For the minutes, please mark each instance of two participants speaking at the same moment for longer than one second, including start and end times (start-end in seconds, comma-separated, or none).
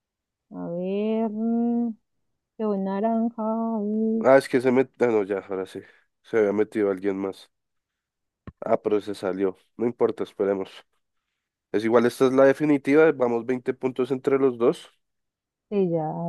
none